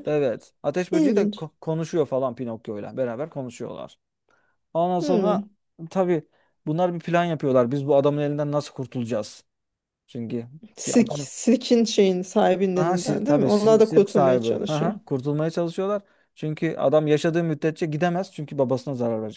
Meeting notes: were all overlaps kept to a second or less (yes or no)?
no